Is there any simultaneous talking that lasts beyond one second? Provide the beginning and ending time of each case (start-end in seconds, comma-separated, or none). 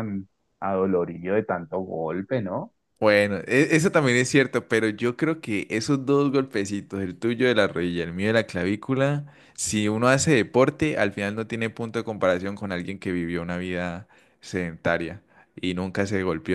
none